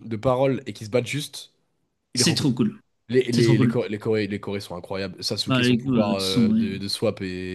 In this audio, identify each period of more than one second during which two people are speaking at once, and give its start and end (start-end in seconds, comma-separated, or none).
5.5-6.7